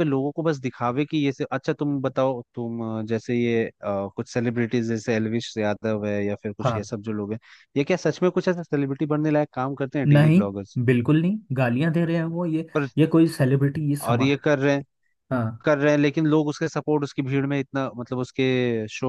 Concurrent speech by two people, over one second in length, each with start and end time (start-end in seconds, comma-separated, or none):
none